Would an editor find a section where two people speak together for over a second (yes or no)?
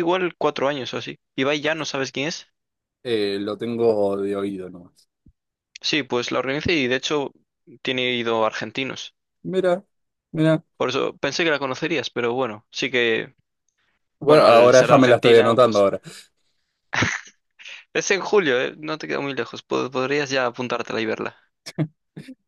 yes